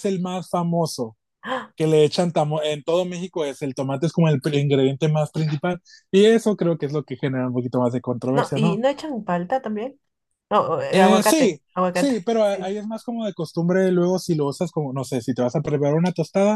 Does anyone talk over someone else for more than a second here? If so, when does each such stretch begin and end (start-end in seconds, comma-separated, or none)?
10.9-12.8